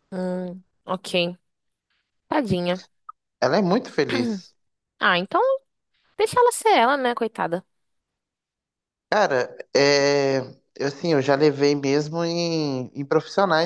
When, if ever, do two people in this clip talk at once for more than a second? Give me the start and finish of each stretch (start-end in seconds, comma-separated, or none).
none